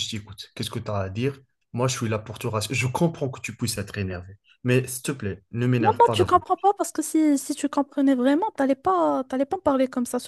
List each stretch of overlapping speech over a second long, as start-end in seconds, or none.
none